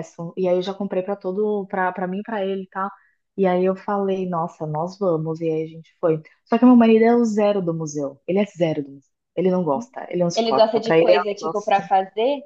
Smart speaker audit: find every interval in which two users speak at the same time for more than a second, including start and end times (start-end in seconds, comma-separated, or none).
10.3-11.9